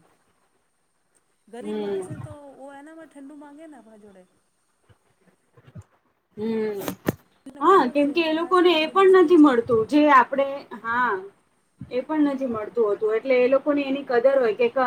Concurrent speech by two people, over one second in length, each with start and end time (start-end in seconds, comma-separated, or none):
7.6-9.8